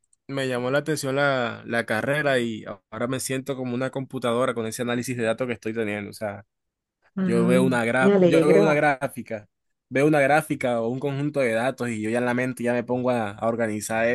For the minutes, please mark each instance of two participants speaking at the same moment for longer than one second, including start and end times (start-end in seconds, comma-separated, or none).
7.2-8.8